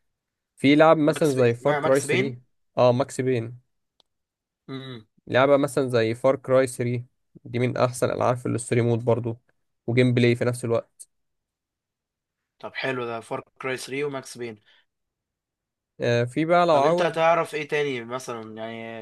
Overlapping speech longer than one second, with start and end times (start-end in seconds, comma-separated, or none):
1.1-2.4